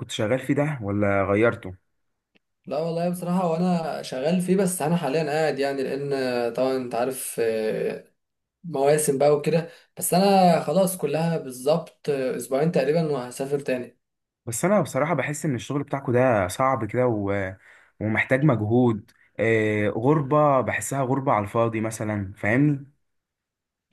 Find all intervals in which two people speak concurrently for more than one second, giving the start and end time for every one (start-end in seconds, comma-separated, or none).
none